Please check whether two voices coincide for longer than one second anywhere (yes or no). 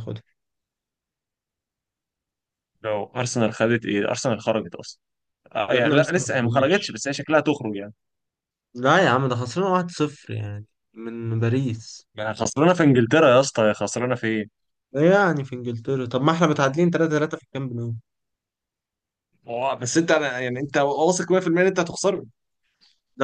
yes